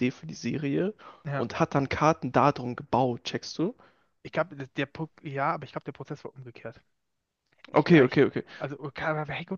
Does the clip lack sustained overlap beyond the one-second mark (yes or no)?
yes